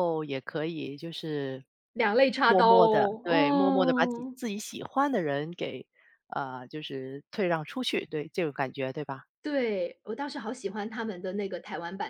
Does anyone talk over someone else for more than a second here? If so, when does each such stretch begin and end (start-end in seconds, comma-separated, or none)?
2.4-4.4